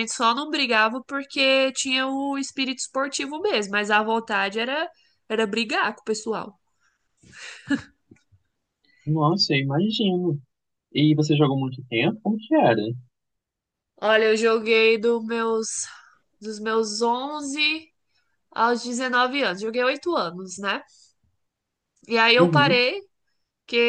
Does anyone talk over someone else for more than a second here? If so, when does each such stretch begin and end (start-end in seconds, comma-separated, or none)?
none